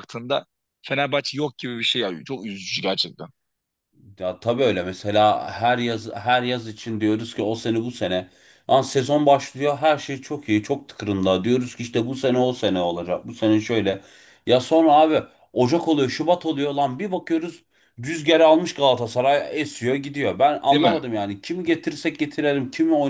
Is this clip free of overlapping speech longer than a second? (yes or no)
yes